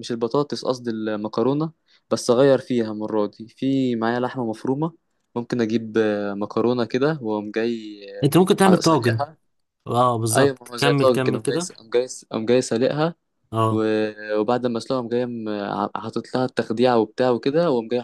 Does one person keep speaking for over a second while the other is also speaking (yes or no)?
yes